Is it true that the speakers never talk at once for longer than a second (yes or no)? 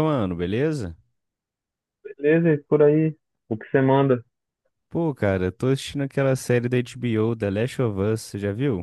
yes